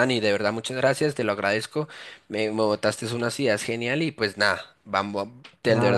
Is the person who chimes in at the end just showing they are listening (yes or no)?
no